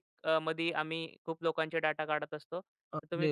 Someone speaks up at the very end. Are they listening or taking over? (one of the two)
taking over